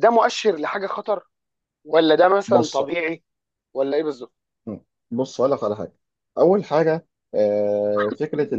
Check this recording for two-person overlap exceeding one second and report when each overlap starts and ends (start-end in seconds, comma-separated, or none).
none